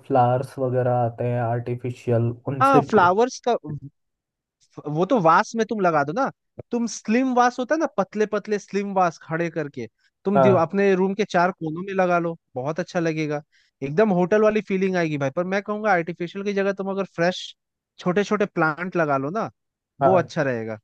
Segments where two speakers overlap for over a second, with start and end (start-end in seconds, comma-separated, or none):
none